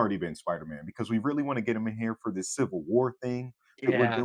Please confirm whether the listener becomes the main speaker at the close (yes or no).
no